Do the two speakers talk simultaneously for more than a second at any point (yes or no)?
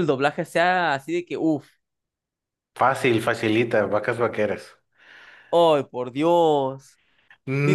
no